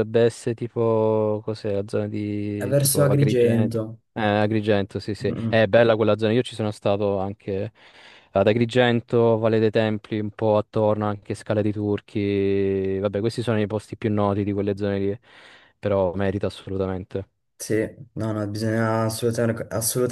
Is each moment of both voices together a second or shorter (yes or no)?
no